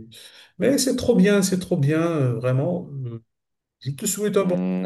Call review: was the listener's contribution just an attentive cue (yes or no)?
no